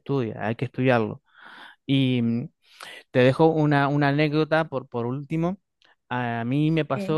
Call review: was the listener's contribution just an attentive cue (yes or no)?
yes